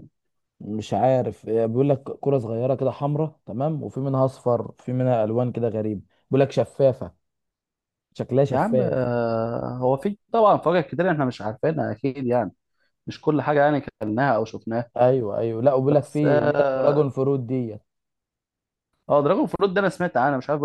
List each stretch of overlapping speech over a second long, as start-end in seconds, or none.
15.9-17.1